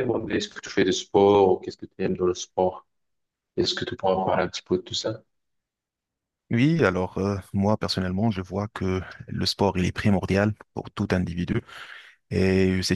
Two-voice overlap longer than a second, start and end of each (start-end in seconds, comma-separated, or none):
none